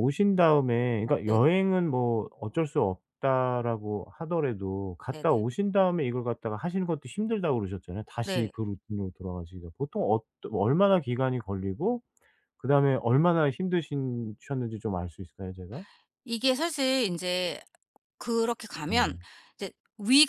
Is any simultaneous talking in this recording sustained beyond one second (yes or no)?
no